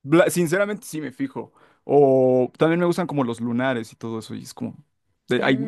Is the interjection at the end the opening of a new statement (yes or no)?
no